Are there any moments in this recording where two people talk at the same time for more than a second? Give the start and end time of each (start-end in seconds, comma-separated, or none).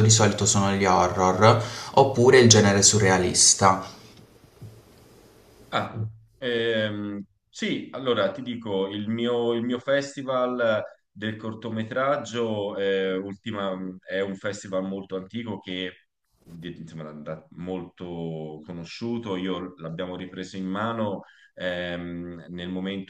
none